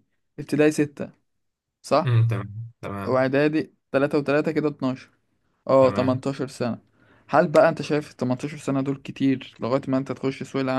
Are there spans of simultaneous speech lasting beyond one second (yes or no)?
no